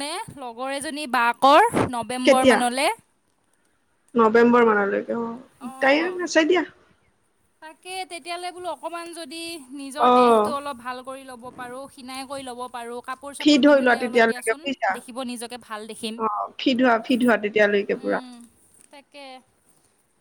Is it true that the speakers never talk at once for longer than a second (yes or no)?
no